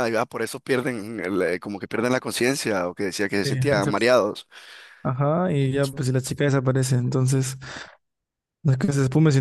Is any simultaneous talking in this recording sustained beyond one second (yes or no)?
no